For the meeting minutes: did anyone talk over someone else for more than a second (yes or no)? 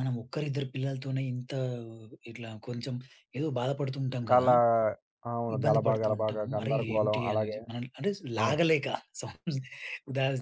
yes